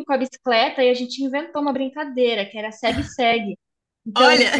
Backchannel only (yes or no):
yes